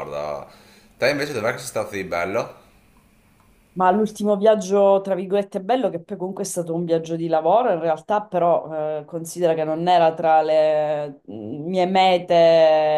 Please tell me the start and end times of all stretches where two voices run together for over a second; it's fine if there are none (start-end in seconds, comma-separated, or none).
none